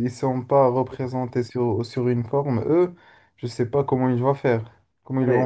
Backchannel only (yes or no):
no